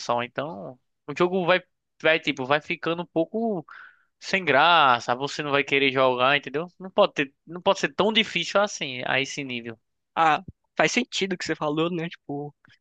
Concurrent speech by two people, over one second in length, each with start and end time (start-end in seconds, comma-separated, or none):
none